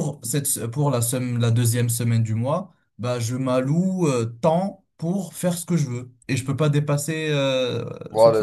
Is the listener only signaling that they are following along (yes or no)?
no